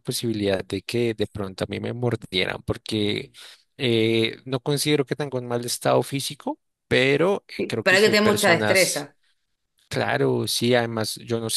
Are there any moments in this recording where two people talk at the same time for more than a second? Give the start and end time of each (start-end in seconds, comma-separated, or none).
7.6-9.1